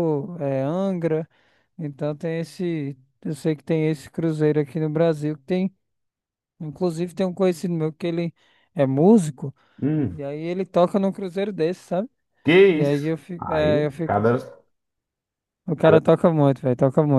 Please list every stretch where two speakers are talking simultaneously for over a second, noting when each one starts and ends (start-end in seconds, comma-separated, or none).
12.7-14.2